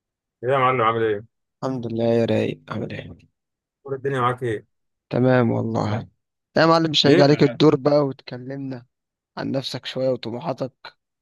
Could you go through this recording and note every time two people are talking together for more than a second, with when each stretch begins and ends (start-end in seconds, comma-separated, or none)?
none